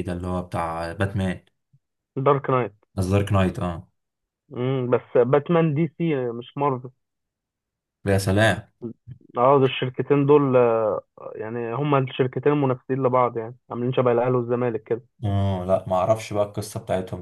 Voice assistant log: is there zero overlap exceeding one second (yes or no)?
yes